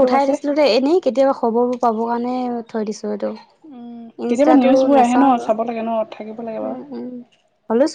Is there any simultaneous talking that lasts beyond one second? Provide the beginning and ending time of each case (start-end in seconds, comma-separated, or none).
4.3-6.8